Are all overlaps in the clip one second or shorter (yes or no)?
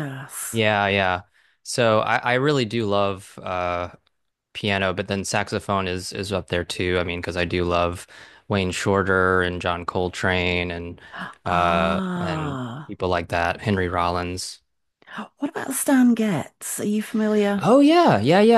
no